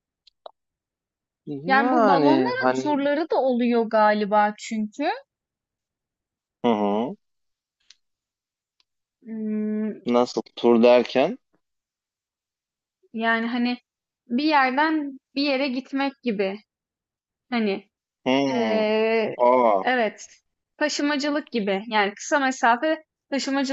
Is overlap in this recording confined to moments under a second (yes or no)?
no